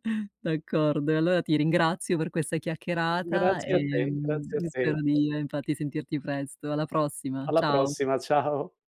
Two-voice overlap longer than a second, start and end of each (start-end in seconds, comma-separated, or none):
3.3-4.8